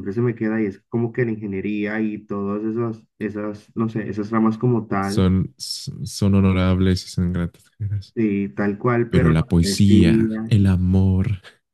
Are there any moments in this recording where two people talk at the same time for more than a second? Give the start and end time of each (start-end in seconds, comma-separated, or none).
9.1-10.5